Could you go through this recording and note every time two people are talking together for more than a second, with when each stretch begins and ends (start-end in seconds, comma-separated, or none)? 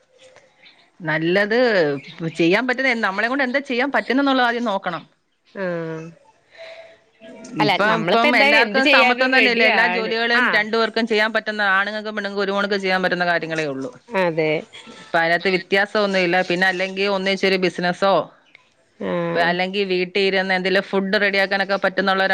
7.7-10.6